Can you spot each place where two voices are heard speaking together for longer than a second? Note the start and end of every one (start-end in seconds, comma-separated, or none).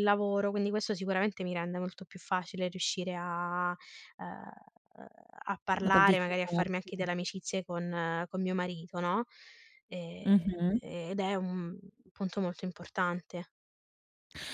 5.9-7.1